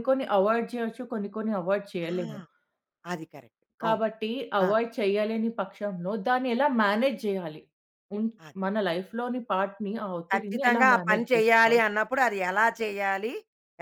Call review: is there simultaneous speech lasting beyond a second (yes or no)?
yes